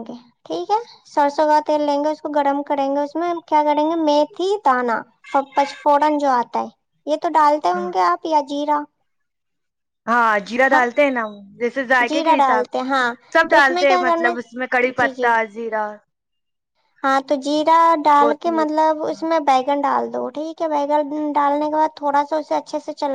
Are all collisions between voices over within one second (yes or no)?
no